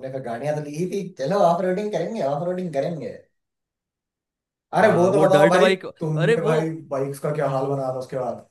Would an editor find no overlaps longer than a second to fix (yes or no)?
no